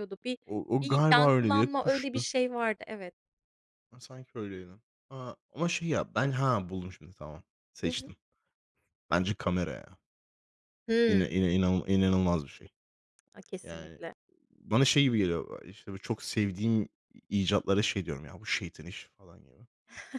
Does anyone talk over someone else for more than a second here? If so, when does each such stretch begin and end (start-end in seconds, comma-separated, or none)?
0.8-2.2